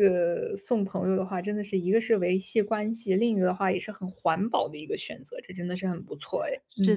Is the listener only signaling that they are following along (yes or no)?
no